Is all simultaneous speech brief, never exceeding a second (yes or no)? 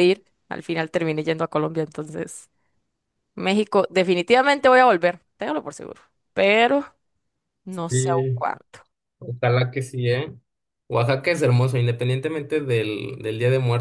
yes